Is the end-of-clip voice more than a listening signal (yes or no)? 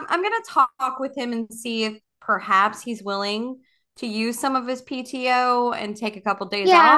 yes